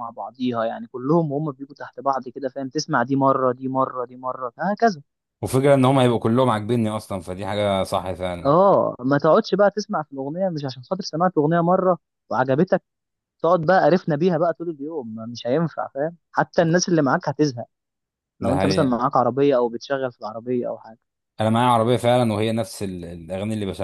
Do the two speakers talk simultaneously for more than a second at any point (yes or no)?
no